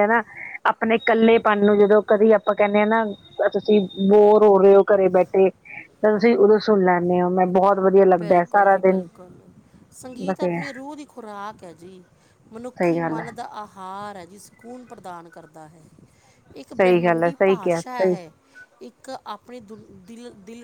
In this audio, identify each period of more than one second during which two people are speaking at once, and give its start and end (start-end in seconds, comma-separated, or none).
16.8-18.1